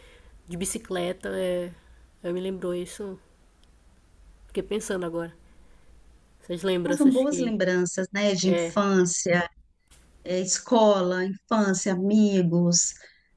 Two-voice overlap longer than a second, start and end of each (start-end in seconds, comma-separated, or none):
none